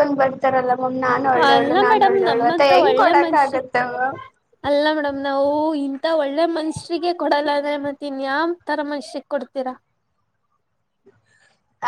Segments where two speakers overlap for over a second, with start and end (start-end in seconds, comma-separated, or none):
1.5-3.6